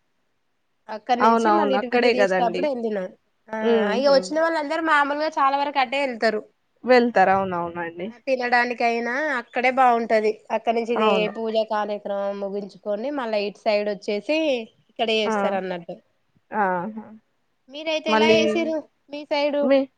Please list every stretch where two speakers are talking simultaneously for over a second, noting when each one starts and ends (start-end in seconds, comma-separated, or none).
1.3-2.6